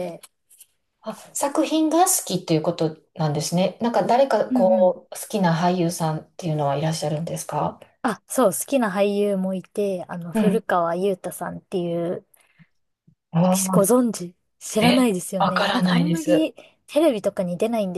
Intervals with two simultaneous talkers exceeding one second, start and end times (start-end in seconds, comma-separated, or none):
14.8-16.5